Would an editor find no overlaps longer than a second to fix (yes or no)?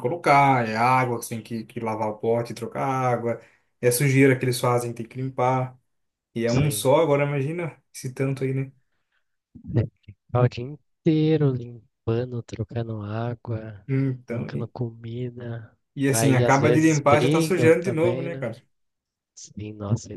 no